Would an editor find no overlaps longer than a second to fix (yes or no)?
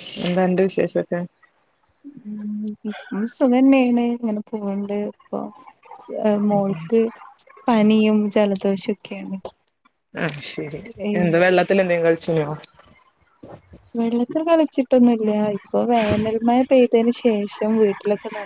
yes